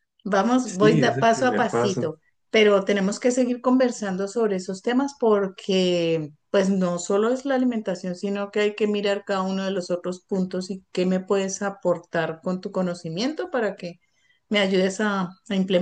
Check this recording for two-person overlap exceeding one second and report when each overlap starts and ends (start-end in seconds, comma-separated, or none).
0.6-2.1